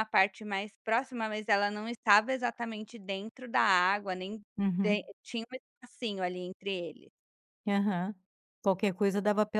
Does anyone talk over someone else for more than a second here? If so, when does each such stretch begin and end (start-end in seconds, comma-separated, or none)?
none